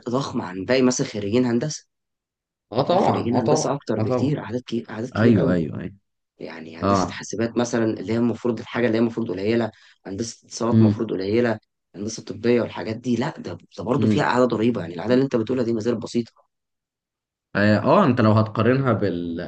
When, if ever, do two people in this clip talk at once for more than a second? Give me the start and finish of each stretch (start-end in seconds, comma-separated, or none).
2.9-4.4